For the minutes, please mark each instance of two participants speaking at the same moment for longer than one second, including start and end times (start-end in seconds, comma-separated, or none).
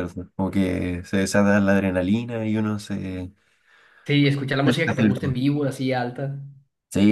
none